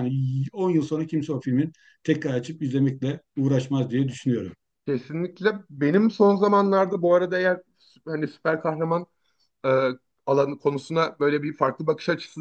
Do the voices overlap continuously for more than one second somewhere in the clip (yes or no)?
no